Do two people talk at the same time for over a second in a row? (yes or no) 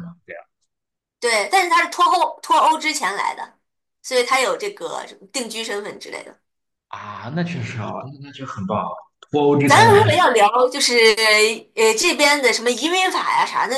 no